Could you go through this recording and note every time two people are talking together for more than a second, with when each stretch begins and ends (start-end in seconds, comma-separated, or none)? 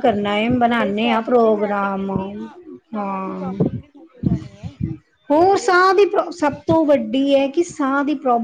0.7-2.1